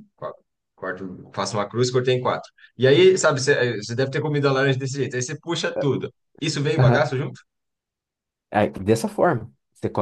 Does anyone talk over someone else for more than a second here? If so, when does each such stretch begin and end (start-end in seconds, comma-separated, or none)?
none